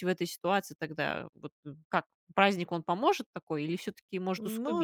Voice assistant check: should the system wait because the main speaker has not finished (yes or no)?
no